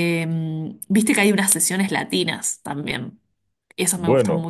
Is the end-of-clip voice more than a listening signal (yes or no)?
yes